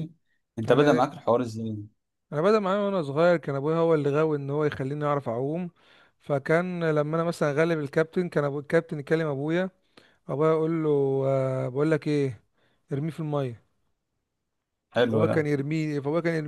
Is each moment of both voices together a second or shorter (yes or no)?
yes